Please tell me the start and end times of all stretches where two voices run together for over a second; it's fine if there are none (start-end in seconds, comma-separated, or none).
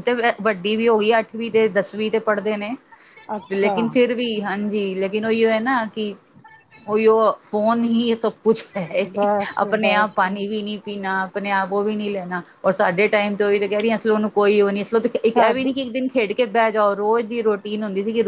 none